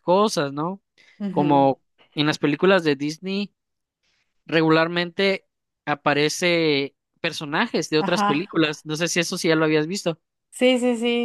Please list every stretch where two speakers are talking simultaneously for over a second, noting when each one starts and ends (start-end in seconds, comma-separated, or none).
none